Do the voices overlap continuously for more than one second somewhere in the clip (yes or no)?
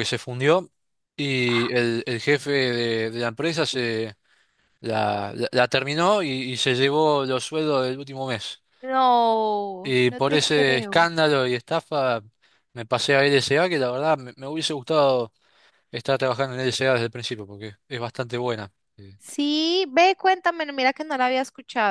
yes